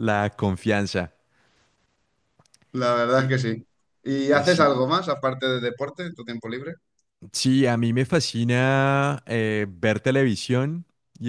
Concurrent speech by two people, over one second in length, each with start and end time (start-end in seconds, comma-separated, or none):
none